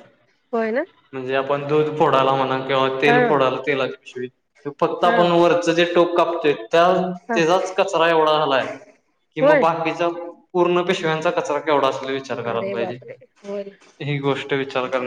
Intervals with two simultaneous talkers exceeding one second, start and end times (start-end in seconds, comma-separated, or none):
none